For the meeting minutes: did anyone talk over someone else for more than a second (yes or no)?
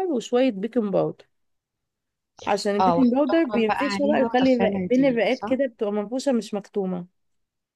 yes